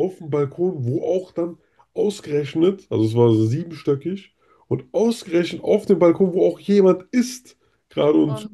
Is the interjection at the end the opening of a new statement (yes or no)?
no